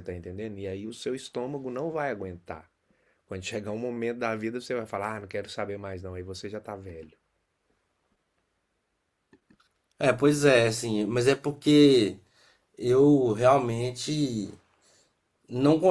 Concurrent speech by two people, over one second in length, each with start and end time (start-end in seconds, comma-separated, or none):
none